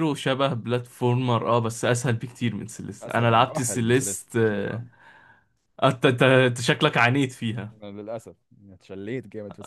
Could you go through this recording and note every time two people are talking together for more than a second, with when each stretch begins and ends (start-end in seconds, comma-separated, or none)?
3.0-4.8